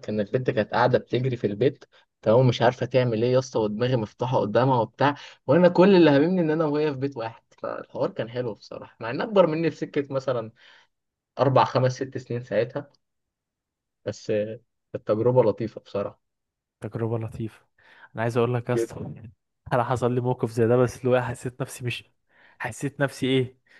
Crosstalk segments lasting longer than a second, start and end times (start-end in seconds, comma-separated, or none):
none